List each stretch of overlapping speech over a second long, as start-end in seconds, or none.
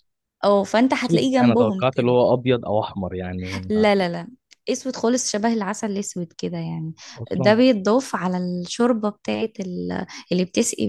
0.9-2.1